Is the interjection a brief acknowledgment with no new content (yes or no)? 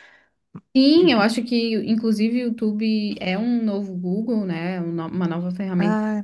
yes